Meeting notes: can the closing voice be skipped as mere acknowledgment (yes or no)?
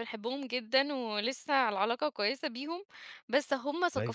yes